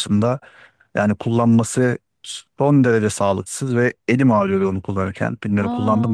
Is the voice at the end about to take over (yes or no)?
yes